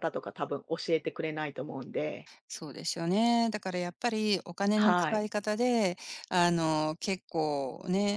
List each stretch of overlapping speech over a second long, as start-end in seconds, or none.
none